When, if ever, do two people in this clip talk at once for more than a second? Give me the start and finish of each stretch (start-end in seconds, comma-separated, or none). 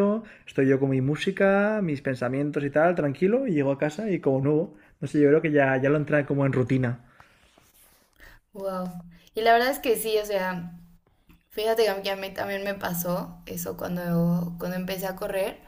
none